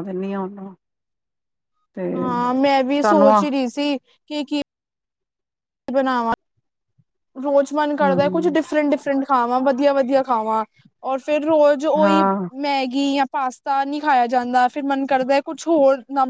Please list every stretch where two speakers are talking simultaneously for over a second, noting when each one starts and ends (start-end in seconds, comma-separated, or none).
none